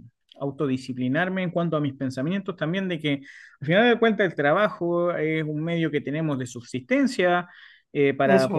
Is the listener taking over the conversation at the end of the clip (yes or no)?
no